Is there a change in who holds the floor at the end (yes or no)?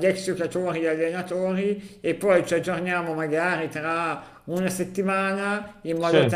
no